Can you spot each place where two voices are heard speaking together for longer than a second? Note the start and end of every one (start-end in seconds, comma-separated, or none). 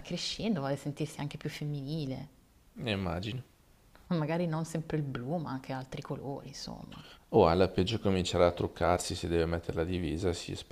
none